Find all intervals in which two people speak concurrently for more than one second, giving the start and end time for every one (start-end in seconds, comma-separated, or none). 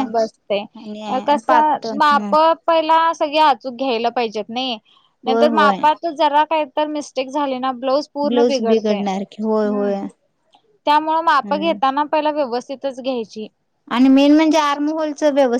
8.3-9.9